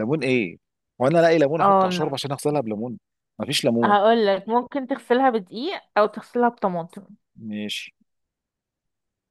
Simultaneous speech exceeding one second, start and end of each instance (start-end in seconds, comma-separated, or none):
none